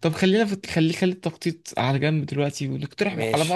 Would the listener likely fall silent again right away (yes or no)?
yes